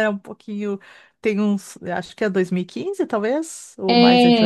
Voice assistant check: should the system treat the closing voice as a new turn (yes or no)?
yes